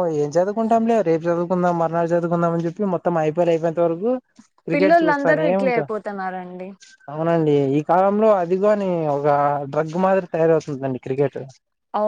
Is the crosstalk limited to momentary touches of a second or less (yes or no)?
no